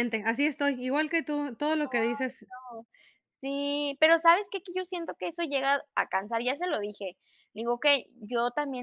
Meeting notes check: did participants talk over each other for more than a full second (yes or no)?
no